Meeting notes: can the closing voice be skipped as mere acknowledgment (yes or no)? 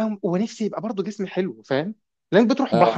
yes